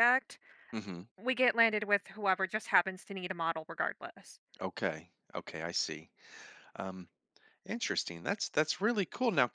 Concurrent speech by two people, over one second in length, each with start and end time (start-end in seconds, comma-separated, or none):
none